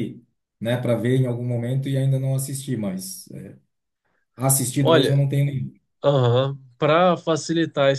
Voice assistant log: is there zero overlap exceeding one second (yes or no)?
yes